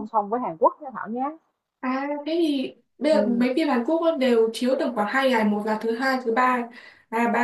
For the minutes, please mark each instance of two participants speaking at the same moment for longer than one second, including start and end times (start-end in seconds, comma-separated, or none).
none